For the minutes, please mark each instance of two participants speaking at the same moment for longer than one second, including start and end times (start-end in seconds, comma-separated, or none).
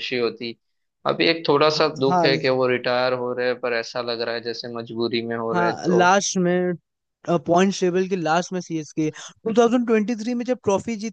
none